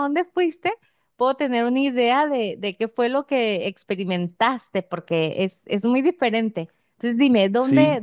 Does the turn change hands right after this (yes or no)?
no